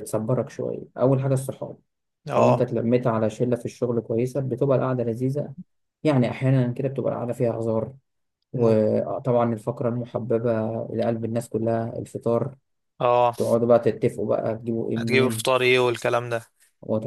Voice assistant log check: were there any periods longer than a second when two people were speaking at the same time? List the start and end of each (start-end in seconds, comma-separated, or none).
none